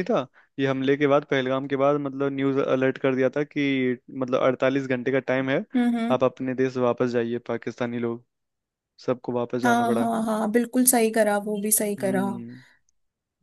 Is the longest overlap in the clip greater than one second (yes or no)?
no